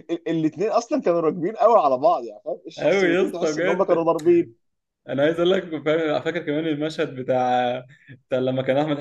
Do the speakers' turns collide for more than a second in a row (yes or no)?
yes